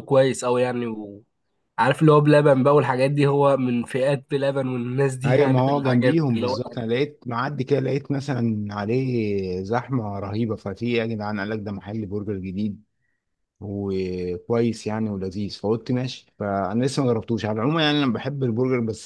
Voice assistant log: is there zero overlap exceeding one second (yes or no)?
no